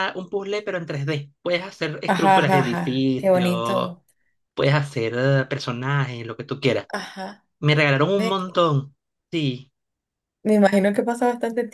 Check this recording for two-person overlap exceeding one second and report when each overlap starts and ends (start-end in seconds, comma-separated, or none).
2.0-4.0